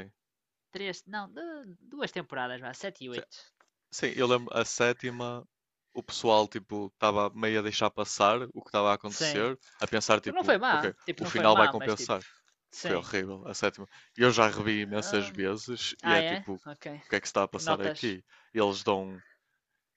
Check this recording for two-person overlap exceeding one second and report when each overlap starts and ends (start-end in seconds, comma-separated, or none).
10.2-12.1